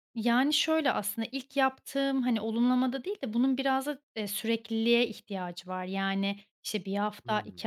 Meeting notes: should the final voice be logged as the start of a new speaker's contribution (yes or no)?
no